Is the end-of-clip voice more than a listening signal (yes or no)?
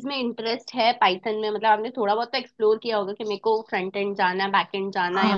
yes